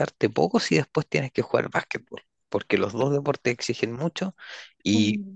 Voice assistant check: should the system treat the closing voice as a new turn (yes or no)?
no